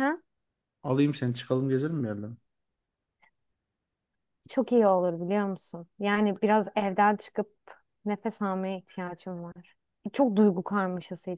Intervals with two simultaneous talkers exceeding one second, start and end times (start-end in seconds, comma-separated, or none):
none